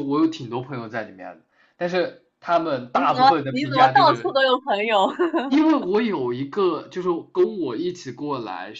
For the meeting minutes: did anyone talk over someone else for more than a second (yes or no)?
yes